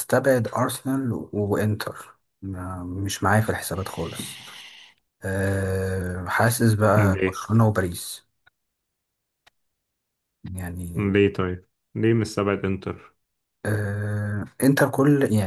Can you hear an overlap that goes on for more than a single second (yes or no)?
no